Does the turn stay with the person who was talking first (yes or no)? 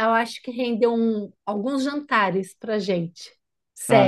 no